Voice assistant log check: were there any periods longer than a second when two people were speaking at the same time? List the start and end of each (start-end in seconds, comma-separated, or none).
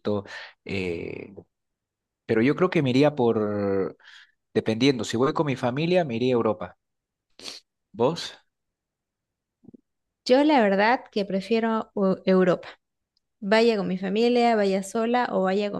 none